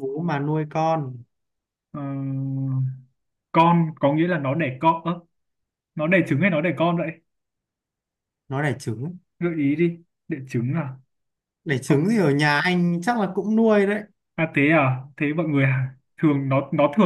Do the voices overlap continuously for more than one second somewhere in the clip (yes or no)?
no